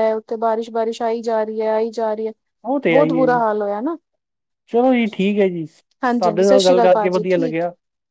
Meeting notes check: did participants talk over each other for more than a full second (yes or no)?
yes